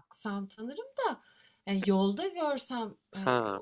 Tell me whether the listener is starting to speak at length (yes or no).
no